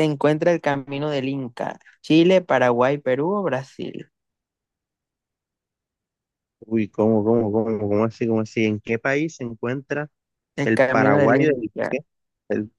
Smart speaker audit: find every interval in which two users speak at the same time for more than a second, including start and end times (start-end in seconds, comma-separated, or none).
10.6-12.0